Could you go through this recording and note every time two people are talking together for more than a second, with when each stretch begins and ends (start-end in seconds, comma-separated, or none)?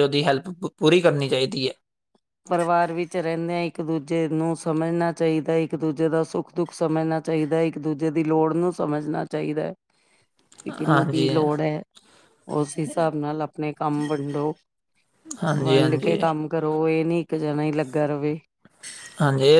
none